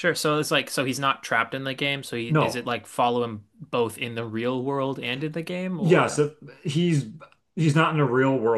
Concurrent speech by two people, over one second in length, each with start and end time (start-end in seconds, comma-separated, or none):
none